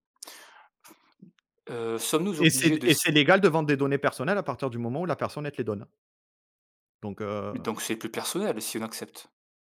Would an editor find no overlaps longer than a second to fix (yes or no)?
yes